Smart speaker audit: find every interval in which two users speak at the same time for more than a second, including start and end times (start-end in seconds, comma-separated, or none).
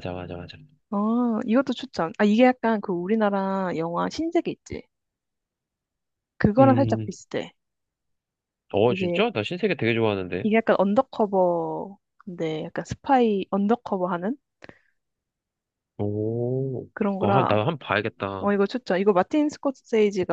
none